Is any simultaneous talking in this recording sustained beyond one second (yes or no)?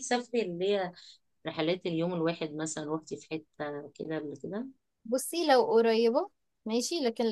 no